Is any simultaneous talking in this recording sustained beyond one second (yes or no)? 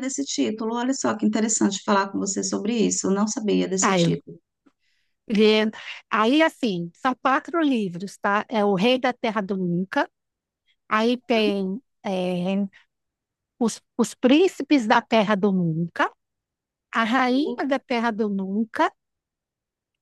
no